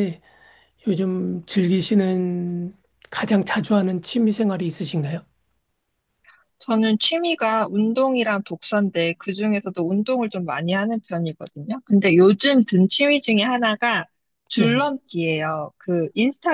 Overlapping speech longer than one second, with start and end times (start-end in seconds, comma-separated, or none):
none